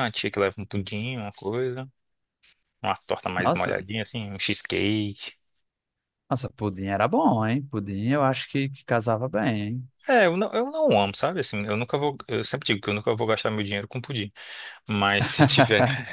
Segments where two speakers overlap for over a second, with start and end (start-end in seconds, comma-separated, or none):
none